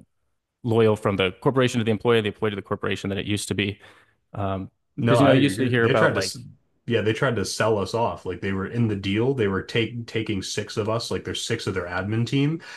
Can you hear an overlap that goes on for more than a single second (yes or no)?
yes